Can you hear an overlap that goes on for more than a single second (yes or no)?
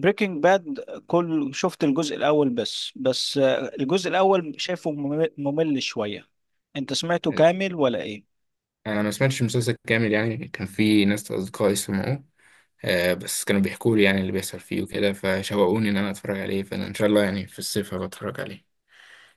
no